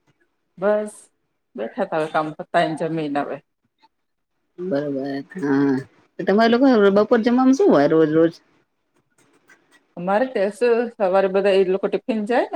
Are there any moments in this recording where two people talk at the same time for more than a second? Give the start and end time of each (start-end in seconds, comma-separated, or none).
none